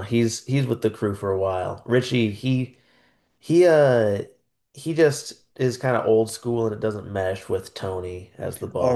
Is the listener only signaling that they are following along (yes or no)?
no